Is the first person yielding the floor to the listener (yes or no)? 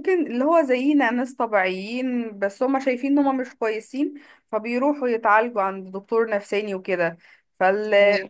no